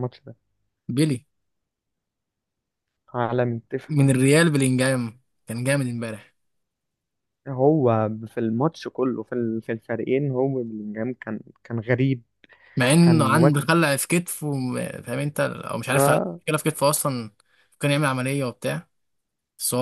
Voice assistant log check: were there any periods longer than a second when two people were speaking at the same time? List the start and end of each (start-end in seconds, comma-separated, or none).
none